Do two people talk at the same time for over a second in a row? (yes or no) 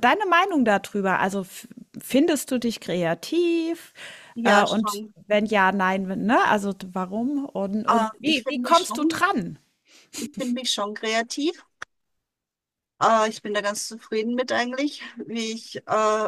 yes